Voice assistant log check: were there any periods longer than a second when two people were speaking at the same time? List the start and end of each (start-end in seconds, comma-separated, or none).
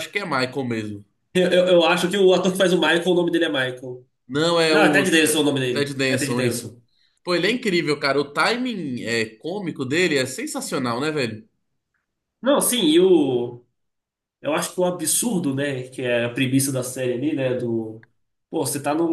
4.7-6.7